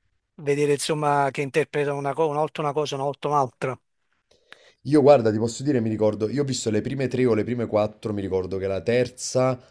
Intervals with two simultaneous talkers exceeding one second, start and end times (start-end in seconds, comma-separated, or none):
none